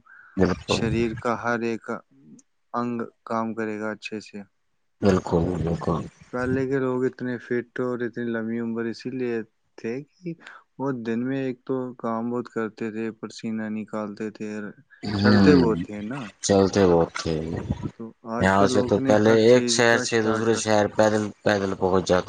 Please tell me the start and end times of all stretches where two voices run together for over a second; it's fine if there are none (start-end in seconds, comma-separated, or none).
18.0-20.0